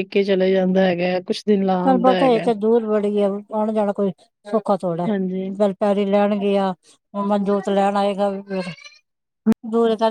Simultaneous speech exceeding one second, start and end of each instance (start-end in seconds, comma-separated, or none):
none